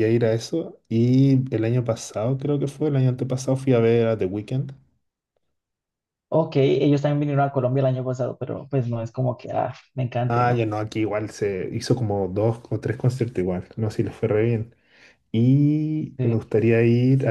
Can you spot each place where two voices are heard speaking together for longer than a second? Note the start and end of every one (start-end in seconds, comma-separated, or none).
none